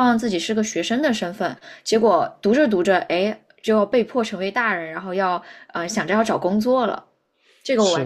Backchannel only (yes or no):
no